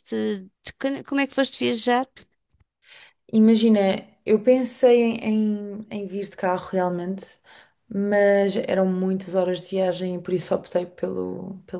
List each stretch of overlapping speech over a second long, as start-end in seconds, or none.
none